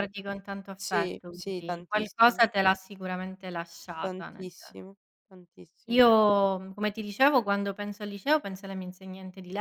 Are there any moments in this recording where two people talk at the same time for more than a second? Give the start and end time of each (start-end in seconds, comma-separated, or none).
0.7-2.4